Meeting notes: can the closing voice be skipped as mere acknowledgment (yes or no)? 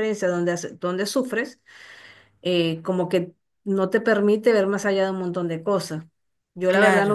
yes